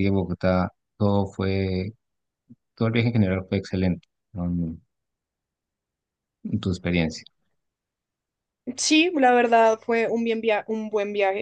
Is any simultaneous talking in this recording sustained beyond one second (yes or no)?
no